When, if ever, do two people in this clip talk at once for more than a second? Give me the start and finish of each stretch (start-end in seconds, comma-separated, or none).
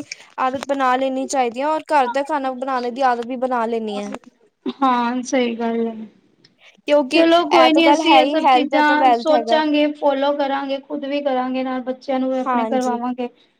7.1-9.6